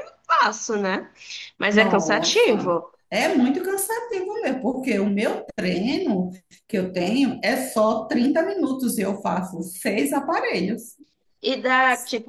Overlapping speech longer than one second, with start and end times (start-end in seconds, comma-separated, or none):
1.7-2.9